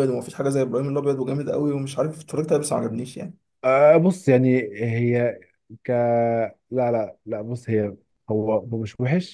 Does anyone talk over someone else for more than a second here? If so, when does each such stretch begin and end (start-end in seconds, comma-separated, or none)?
none